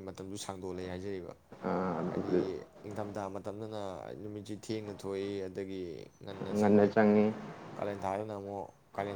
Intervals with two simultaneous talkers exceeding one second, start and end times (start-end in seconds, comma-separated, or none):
none